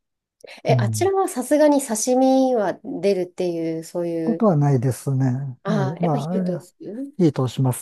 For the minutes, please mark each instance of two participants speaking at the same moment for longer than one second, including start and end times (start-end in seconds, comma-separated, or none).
5.7-7.1